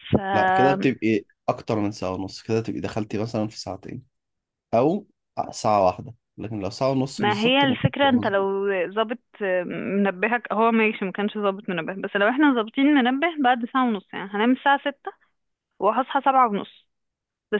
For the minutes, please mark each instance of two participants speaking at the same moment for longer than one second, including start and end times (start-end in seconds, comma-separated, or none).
7.2-8.5